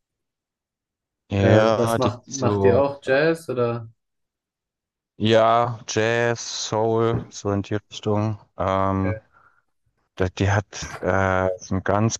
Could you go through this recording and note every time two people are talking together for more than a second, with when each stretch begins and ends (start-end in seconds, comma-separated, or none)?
1.4-2.9